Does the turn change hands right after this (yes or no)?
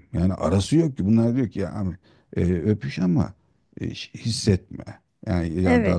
yes